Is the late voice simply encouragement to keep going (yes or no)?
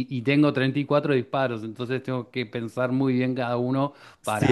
no